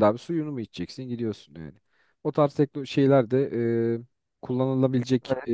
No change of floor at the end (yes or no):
yes